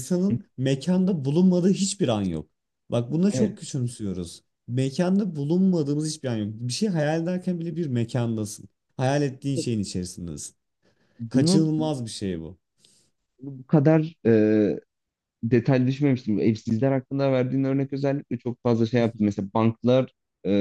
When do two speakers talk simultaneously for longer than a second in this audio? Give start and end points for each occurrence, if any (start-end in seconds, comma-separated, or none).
none